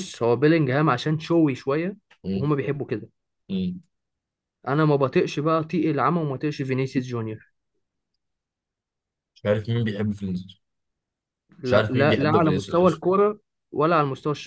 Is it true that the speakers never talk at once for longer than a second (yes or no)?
no